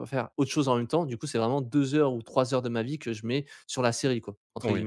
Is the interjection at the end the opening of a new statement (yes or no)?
yes